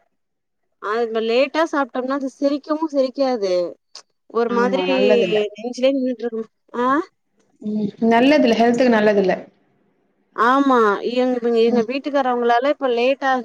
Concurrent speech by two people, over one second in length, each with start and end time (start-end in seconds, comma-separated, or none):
none